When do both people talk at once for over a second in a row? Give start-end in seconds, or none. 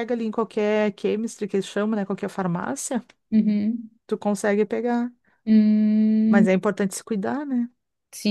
none